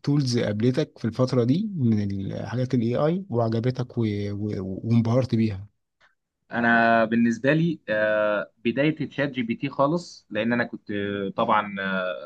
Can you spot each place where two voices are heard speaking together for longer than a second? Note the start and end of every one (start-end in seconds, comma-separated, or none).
none